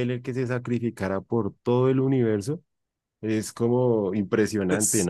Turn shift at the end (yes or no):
yes